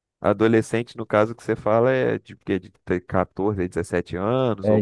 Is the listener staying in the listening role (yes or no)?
no